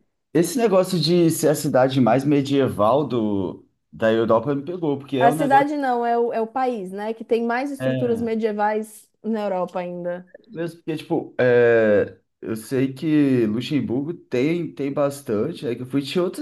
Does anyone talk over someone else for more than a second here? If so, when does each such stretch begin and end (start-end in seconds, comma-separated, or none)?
none